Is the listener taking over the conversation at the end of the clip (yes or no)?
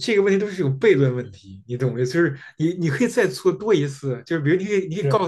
no